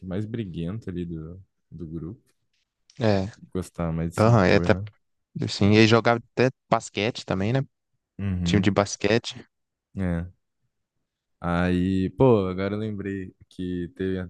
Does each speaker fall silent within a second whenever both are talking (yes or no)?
yes